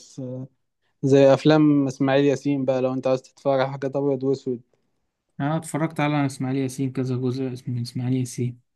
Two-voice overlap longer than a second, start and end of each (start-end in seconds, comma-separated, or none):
none